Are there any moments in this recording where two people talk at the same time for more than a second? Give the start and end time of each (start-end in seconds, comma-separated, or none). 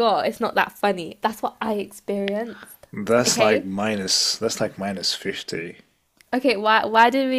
none